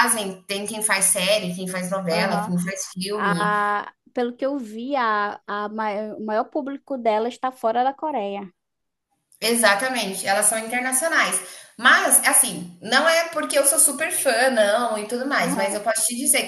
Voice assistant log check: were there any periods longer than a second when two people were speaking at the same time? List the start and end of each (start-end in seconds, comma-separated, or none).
none